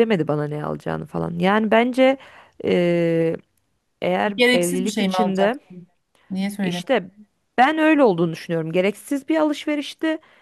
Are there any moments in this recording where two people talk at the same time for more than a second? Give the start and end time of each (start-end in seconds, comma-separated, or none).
4.4-5.6